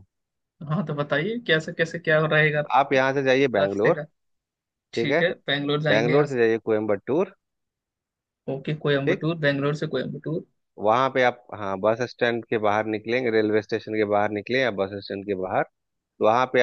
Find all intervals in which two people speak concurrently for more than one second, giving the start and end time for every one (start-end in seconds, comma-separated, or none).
none